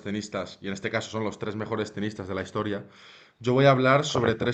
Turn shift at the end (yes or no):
no